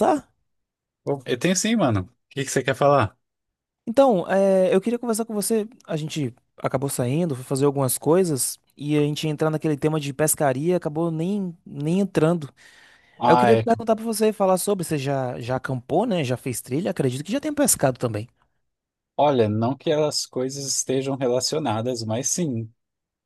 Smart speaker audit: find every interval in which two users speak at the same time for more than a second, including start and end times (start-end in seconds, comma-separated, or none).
none